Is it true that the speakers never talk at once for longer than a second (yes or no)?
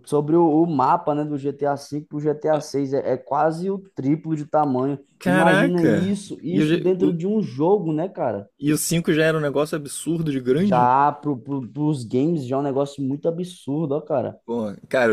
no